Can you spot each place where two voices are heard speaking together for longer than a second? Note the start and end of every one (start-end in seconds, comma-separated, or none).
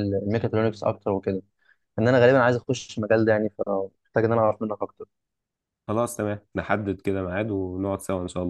none